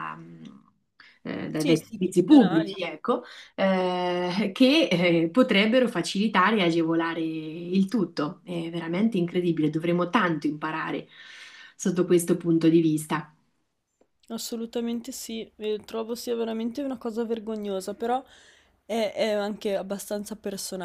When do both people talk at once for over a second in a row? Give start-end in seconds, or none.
1.5-2.7